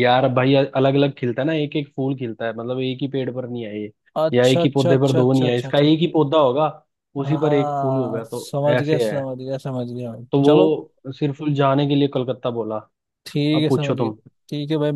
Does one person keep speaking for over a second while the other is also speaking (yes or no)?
yes